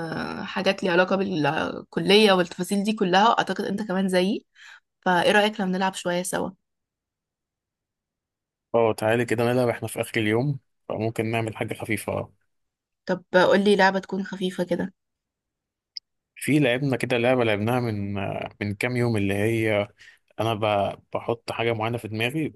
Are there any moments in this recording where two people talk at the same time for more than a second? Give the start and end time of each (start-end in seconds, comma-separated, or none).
none